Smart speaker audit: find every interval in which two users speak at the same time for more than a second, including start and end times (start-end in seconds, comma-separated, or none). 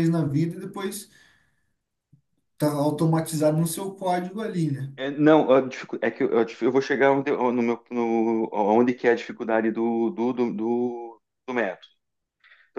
none